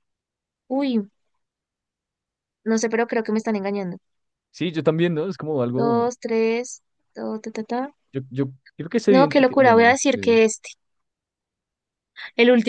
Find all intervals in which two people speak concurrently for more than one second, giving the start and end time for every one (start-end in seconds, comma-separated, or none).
9.1-10.4